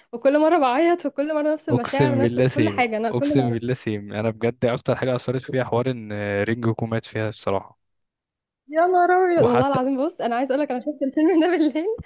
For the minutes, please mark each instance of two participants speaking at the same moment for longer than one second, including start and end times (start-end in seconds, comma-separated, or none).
1.7-3.6